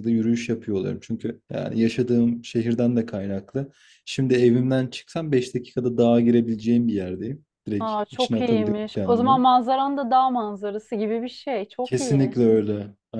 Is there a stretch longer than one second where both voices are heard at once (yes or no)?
yes